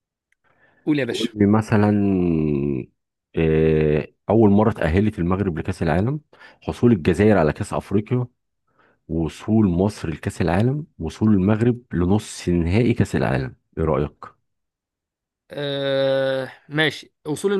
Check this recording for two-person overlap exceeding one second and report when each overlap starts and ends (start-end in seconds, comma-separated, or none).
none